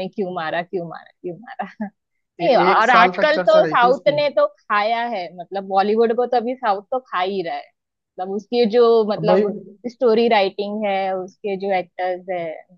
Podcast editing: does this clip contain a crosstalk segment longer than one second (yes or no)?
yes